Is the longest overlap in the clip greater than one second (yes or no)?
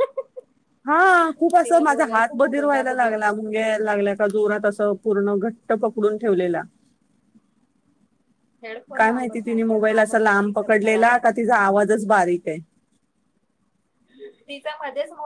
yes